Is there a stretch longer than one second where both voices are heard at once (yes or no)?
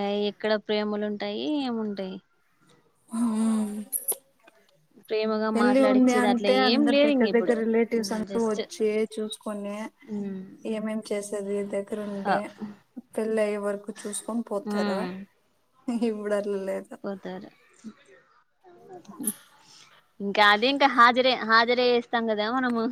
yes